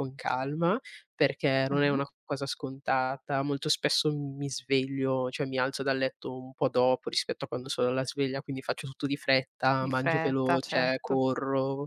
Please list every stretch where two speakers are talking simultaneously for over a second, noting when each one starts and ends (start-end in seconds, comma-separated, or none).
9.8-11.2